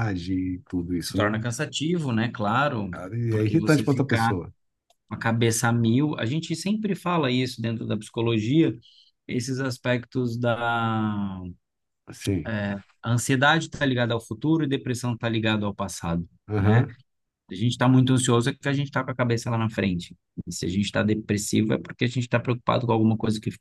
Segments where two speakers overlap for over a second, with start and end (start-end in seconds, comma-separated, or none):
2.9-4.3